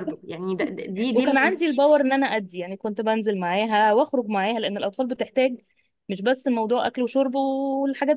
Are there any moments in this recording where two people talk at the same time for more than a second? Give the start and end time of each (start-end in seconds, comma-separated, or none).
none